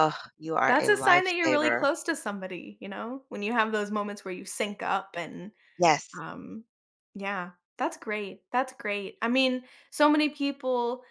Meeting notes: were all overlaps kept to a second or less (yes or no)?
no